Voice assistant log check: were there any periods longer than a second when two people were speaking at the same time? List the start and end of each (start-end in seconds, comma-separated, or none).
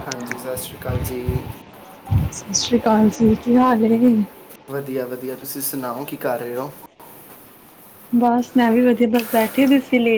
none